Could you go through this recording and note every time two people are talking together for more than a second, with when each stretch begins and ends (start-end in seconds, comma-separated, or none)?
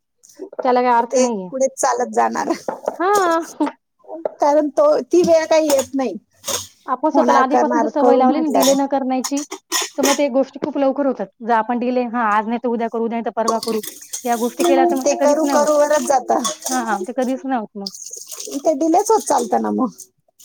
7.1-8.9